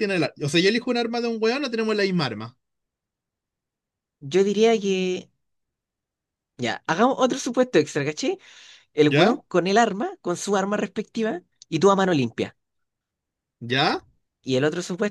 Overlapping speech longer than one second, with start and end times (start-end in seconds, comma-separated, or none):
none